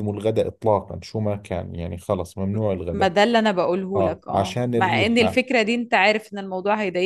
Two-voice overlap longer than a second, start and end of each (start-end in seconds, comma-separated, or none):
4.0-5.4